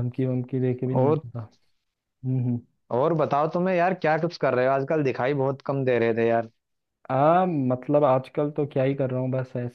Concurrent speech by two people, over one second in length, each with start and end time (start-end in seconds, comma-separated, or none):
none